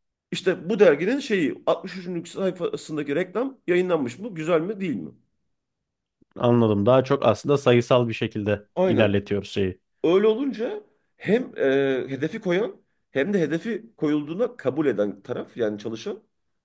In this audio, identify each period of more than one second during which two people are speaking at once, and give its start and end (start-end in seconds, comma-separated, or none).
none